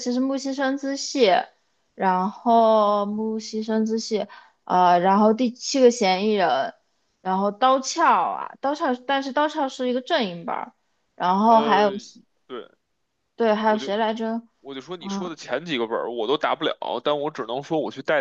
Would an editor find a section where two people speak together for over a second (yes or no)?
no